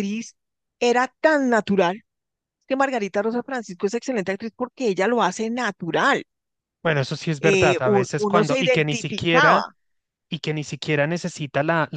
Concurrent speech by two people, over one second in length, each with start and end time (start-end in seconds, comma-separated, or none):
7.4-9.7